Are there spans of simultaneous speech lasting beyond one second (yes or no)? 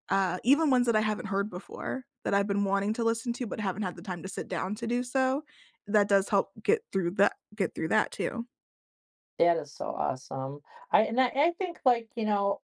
no